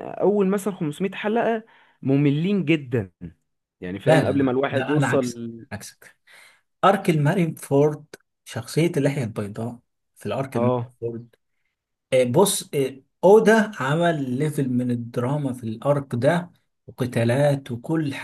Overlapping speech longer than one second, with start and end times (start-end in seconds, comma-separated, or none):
4.0-5.3